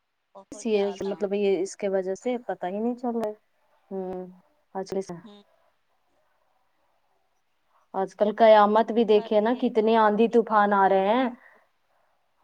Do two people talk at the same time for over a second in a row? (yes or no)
yes